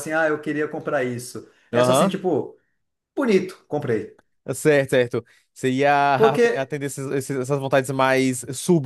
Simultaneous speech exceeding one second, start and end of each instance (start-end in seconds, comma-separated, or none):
none